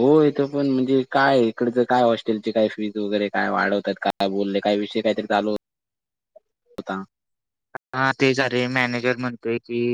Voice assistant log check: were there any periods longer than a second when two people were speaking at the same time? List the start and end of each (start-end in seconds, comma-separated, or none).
none